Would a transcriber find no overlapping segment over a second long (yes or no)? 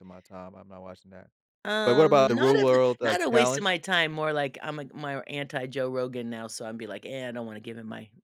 no